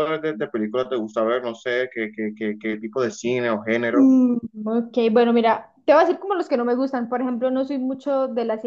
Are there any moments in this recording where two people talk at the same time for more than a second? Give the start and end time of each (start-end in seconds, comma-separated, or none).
none